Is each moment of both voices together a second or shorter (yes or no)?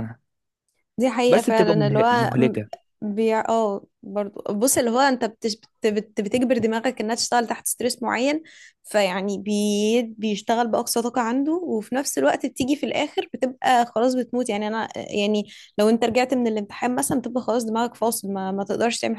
no